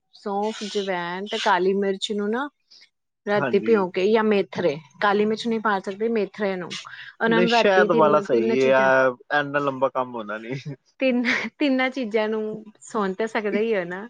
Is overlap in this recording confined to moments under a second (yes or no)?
no